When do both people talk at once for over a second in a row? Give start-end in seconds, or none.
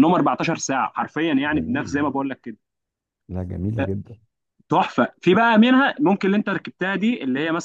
none